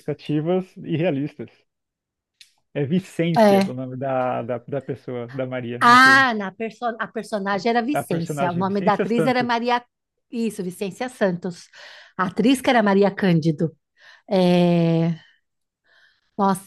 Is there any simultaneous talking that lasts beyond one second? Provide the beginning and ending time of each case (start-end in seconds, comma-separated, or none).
7.5-9.6